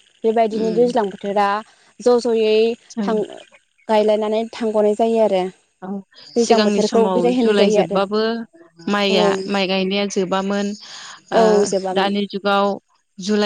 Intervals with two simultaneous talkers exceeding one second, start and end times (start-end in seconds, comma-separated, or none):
6.4-8.0